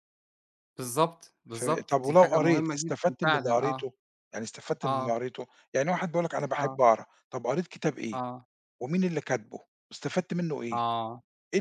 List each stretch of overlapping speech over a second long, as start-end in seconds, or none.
1.5-3.9